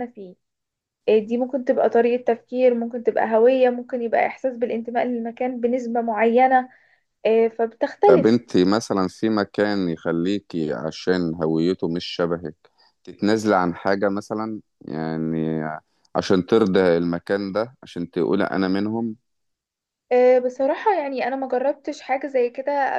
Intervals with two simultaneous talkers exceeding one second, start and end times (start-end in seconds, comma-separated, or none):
none